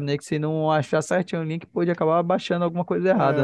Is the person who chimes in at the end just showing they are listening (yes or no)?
no